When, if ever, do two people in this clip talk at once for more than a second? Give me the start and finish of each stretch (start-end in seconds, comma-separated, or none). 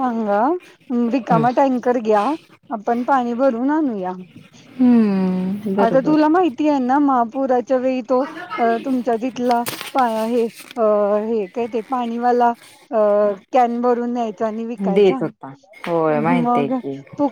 none